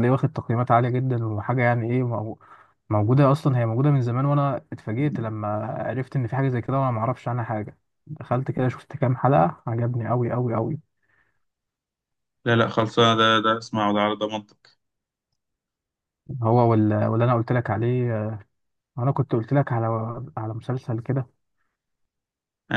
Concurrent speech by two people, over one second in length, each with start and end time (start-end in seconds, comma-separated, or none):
none